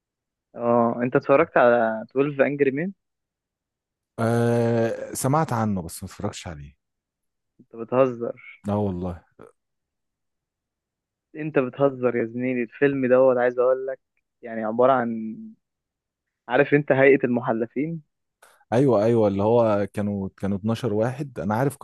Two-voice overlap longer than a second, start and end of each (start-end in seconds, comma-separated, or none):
none